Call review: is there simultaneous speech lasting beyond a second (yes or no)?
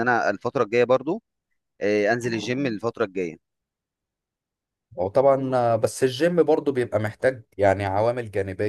no